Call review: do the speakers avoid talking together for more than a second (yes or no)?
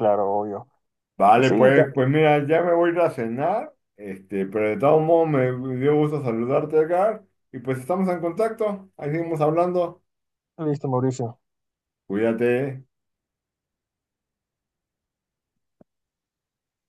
yes